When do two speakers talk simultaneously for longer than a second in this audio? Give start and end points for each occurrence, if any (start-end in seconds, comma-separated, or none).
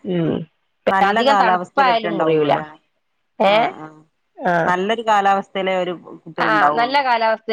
1.1-2.5